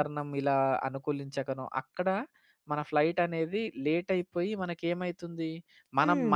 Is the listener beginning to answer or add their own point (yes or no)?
no